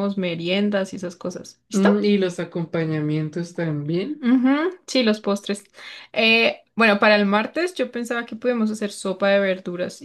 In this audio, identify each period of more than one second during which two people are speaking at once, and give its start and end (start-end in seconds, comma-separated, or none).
none